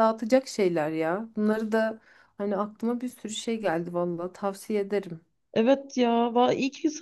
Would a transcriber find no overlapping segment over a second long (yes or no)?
yes